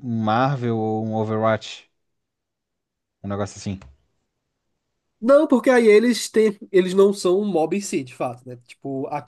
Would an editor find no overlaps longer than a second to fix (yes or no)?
yes